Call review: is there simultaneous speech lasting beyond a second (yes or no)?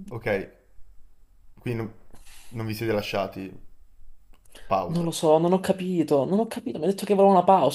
no